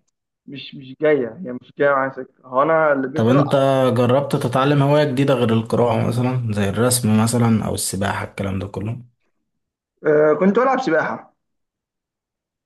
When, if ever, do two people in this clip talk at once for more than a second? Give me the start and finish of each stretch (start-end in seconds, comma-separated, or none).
none